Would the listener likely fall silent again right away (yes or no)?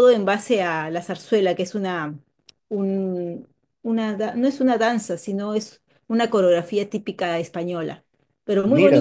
no